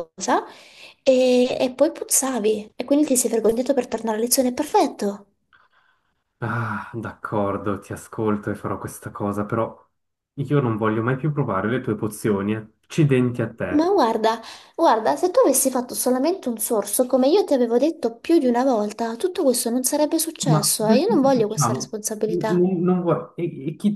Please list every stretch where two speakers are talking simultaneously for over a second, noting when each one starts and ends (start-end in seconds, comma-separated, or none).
20.5-22.6